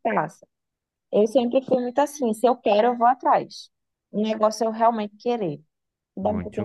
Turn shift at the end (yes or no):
yes